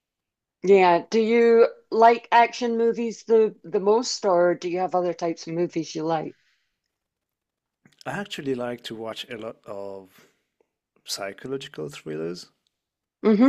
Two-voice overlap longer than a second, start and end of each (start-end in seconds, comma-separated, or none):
none